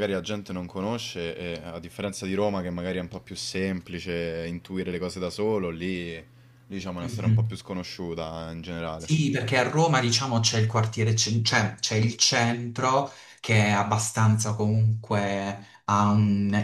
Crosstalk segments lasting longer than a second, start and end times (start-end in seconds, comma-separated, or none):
none